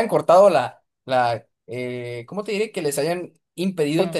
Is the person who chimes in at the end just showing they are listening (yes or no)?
yes